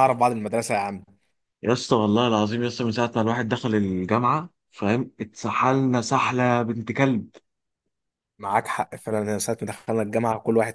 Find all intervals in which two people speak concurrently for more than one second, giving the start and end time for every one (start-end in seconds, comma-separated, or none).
none